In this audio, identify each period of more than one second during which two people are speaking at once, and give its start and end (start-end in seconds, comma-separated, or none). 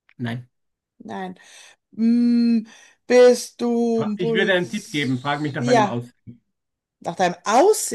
4.2-6.0